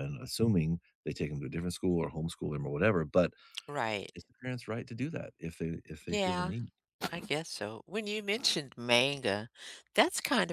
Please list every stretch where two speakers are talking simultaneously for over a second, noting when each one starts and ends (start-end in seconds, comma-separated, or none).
none